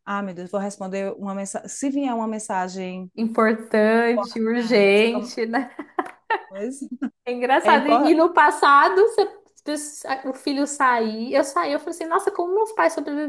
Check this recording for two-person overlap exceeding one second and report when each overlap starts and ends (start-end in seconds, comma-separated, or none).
4.0-5.4